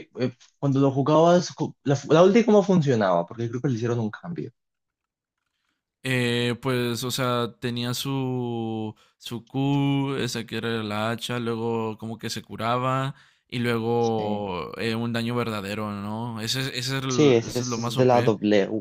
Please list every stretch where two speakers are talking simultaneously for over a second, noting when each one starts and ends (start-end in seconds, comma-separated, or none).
17.1-18.3